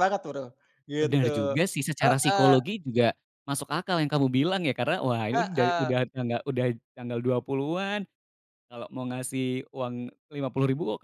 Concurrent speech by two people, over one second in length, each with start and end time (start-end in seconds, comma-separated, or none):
none